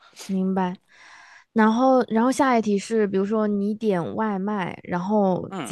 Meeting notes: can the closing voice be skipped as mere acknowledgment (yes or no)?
yes